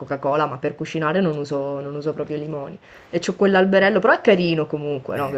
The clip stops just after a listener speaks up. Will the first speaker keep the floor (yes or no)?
yes